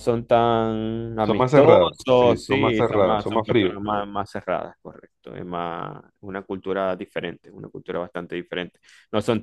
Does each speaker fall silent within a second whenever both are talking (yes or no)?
no